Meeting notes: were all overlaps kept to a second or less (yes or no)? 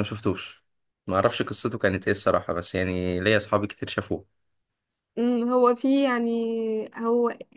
yes